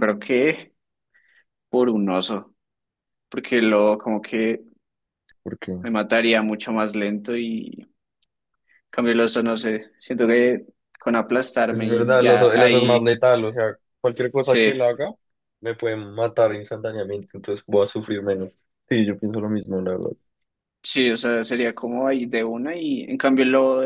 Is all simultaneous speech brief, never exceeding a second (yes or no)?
no